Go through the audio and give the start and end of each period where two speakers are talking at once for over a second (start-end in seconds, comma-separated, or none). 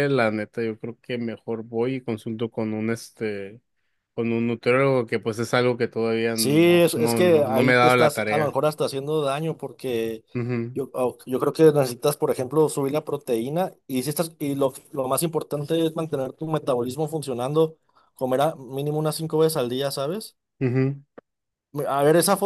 6.3-8.6